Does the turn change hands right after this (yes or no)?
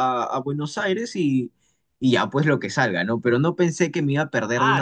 yes